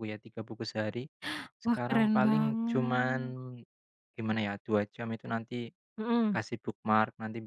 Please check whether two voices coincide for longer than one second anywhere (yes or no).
yes